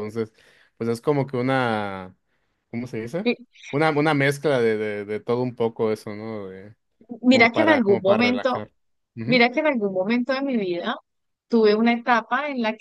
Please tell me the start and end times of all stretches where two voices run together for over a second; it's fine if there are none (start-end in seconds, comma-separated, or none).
7.3-8.6